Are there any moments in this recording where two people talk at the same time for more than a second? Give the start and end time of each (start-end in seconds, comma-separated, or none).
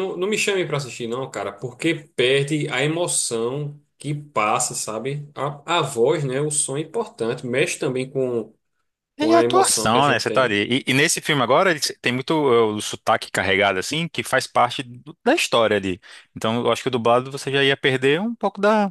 9.2-10.5